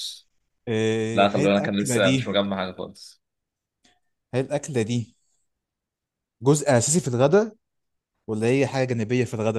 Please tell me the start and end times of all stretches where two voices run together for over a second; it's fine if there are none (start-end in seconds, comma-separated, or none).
1.1-2.4